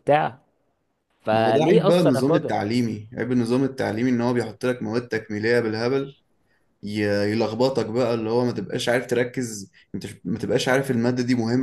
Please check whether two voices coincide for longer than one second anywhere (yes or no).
yes